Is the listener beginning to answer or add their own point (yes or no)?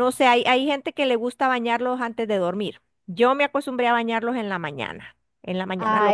yes